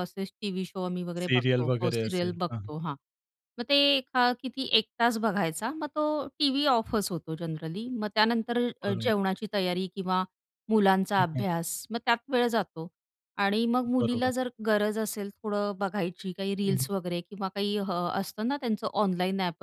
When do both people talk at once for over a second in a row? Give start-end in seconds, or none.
1.2-2.7